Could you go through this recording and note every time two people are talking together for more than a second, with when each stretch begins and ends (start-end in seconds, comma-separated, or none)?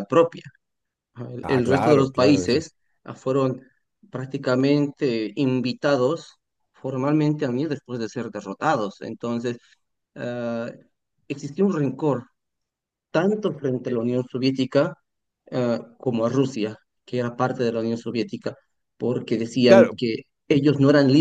1.4-2.7